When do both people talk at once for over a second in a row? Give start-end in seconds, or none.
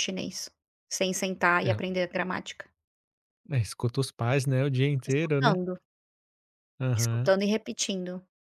none